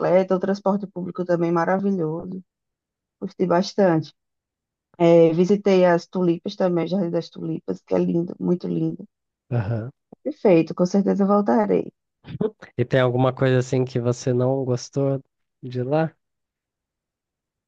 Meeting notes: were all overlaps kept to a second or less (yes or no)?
yes